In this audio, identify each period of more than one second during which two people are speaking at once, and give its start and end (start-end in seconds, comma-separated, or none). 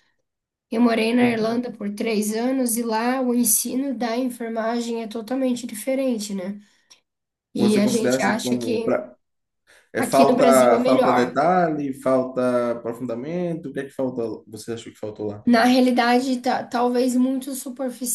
7.6-9.0, 10.0-11.4